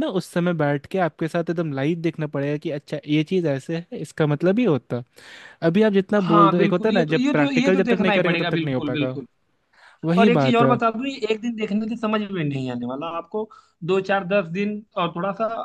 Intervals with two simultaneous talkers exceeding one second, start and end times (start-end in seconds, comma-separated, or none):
6.2-9.2